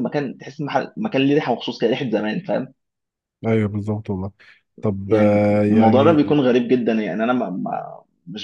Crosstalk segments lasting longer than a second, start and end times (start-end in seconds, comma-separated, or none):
5.1-6.3